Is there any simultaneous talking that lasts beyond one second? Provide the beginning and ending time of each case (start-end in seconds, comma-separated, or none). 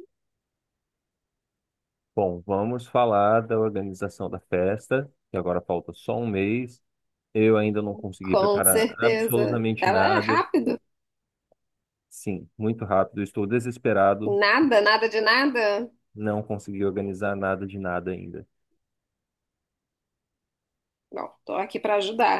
8.2-10.4